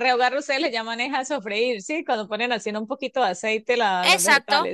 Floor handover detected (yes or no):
yes